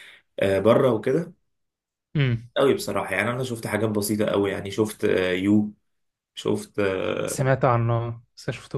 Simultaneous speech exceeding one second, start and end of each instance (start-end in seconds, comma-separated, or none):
none